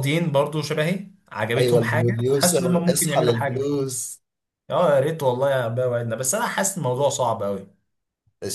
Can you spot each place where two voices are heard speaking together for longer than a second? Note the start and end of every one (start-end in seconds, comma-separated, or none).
1.6-3.7